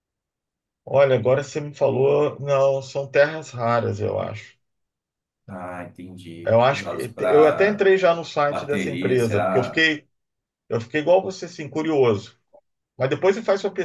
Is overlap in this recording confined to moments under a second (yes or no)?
no